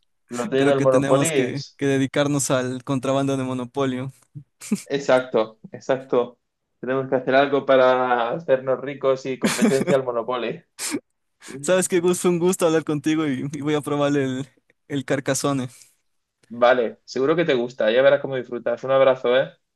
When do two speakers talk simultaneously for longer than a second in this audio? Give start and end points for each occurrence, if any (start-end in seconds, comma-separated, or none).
0.6-1.8